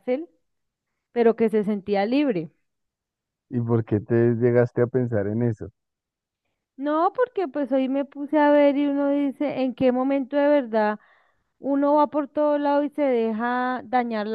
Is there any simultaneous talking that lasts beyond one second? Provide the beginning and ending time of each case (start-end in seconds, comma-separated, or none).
none